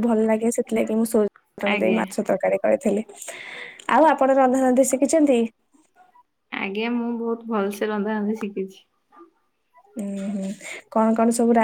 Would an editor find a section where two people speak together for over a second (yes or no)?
no